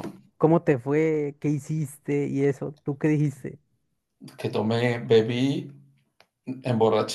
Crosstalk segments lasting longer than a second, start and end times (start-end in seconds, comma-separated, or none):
none